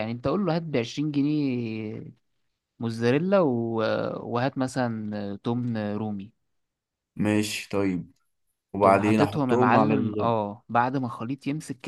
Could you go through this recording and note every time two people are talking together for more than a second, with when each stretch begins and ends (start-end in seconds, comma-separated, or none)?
8.8-10.3